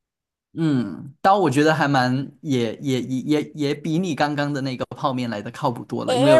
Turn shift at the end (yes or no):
yes